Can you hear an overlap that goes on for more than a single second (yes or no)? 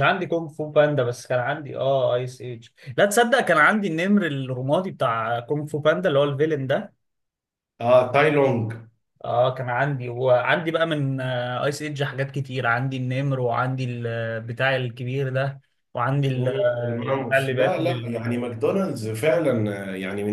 yes